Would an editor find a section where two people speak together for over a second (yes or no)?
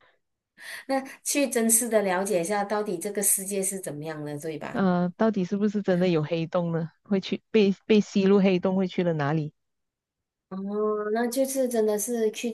no